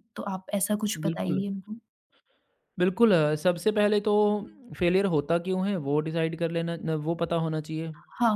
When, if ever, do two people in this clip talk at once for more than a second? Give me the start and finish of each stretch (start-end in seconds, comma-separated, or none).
none